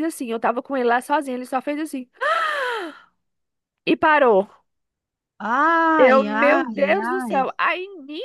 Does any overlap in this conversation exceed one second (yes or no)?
yes